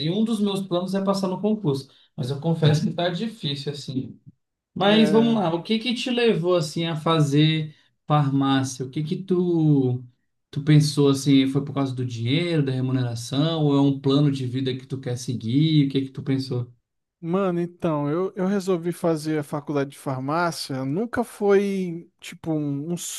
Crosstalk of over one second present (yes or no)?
no